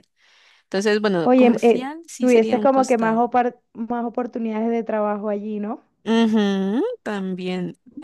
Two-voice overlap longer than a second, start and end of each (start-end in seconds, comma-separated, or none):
1.2-3.2